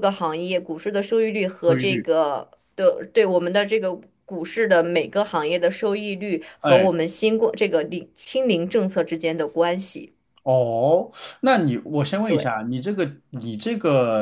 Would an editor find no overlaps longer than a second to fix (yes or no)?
yes